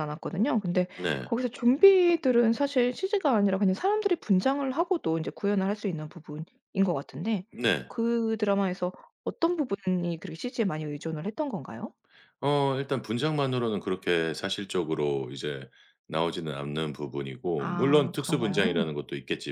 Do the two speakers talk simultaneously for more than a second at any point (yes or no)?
yes